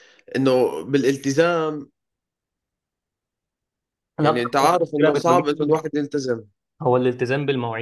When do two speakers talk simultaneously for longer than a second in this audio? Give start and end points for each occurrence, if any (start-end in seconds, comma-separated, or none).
4.2-5.7